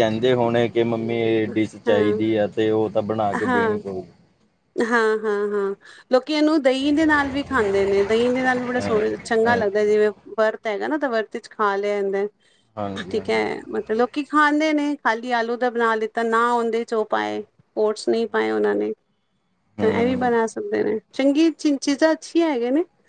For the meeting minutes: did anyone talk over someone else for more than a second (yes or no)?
yes